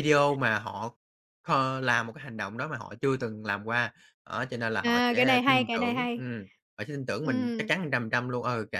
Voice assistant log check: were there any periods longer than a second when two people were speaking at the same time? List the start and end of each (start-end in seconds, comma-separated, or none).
4.8-6.2